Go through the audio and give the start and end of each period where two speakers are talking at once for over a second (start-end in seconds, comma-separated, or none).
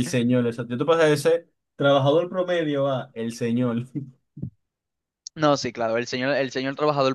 none